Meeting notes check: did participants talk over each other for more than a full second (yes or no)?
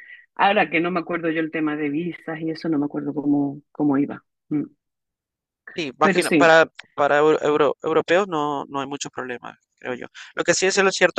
no